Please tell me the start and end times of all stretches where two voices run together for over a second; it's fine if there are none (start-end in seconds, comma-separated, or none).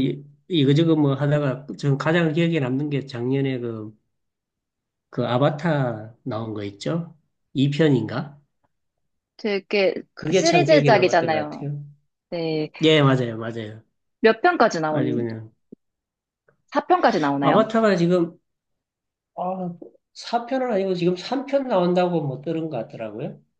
10.1-11.4